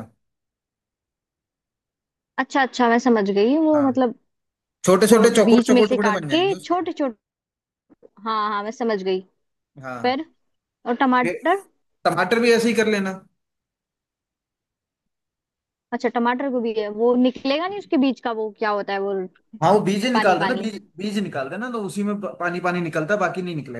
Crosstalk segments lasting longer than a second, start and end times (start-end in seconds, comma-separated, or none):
5.0-6.8